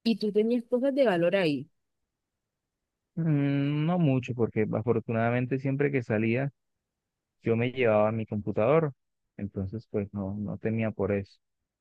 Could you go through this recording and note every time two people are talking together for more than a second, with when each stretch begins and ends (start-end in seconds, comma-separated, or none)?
none